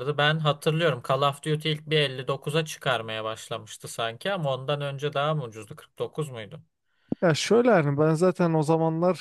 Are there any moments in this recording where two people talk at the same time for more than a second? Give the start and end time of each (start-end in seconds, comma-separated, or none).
none